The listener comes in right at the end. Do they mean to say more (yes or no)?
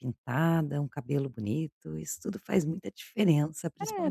yes